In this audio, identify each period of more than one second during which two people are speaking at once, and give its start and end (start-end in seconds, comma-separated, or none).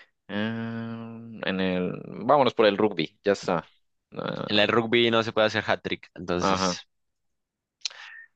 none